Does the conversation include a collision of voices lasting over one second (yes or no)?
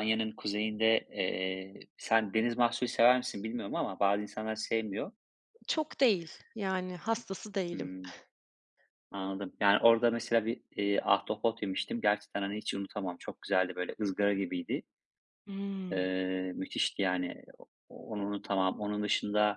no